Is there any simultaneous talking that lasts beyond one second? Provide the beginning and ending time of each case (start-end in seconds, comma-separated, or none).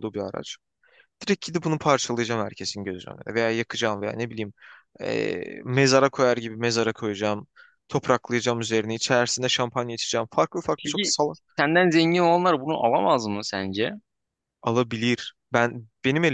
none